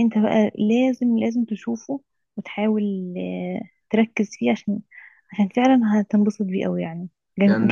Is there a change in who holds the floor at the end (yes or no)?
yes